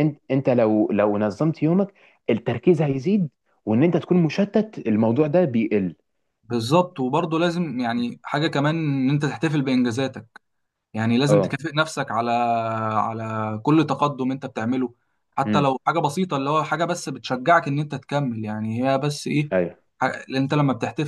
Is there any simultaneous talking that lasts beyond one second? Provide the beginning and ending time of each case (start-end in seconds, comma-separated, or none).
none